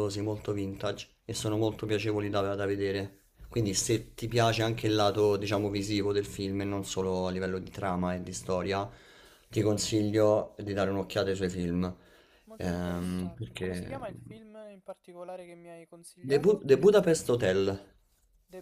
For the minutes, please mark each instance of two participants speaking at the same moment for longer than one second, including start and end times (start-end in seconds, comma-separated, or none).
12.6-14.0